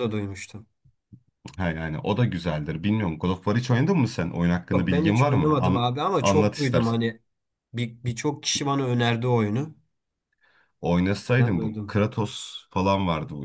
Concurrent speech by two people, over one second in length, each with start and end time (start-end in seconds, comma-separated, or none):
4.7-7.0